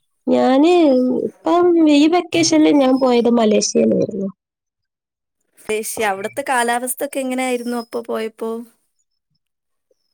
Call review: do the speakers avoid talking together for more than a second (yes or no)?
yes